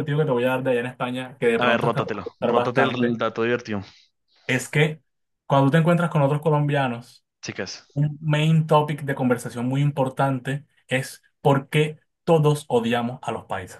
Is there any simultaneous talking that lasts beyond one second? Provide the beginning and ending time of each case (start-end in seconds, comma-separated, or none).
1.6-3.1